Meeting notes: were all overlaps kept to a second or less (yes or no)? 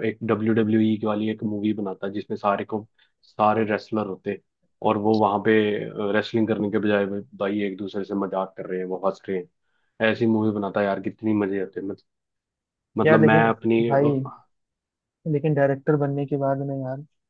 yes